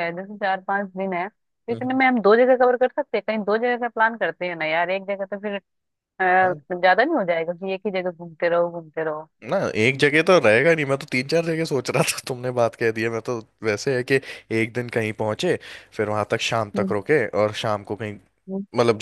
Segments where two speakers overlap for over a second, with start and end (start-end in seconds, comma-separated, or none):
none